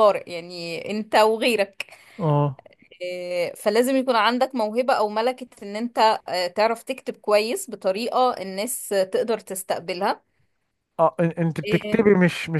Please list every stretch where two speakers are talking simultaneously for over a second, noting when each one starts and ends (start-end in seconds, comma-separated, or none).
none